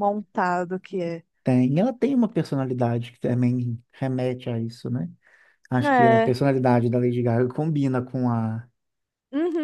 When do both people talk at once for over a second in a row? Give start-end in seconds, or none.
none